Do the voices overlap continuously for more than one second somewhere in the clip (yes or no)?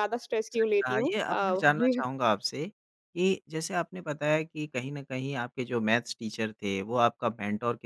yes